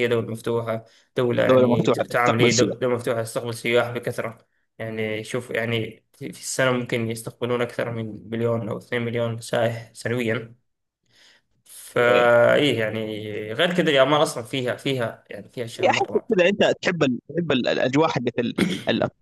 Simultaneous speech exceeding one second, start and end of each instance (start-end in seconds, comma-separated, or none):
1.5-2.8